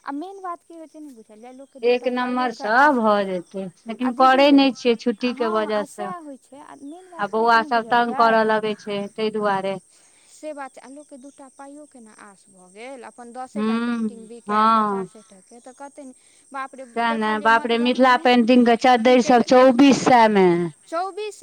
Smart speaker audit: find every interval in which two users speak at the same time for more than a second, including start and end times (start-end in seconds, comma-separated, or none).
5.4-8.4